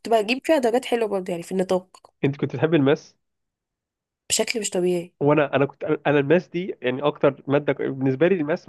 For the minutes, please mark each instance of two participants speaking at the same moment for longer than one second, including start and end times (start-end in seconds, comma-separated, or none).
none